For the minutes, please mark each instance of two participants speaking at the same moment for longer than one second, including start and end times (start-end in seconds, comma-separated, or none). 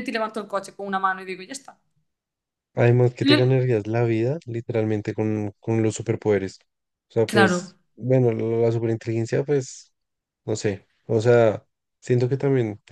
none